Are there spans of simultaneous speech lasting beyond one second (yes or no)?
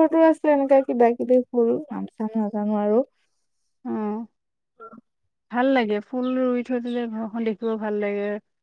no